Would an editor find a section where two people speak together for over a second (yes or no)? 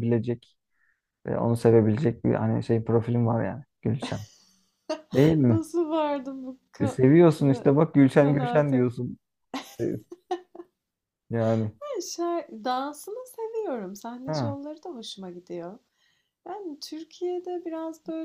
no